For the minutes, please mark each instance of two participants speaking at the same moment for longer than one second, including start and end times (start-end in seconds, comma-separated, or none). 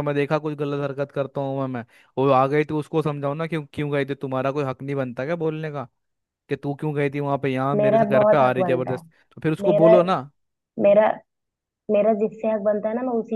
7.8-9.0